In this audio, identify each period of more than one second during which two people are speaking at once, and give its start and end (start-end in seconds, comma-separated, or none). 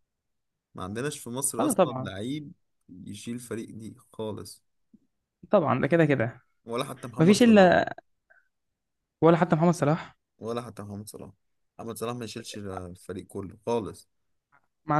none